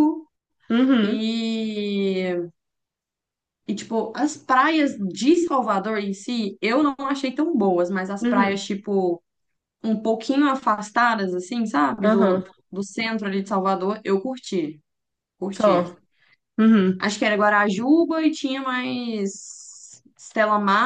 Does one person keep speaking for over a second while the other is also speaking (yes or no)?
no